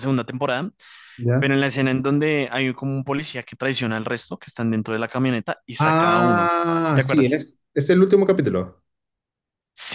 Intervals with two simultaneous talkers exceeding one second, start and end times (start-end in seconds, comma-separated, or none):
5.8-7.4